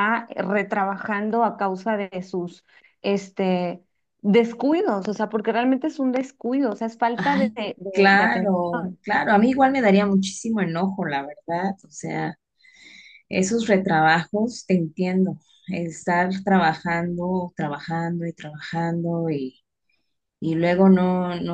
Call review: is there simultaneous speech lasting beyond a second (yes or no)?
yes